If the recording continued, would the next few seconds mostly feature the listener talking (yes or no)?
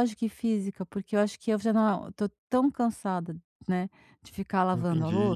yes